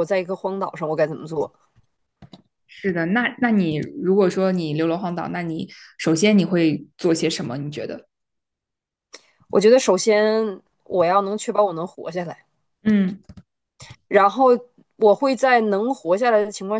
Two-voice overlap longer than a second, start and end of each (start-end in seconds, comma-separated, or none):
none